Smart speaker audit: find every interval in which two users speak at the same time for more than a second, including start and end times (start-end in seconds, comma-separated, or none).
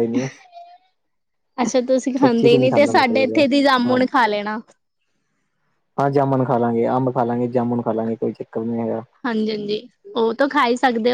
2.2-4.0